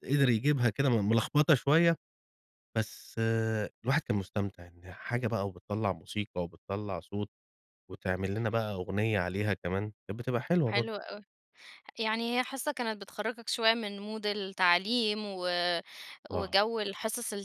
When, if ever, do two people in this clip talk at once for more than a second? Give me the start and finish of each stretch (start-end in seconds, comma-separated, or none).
none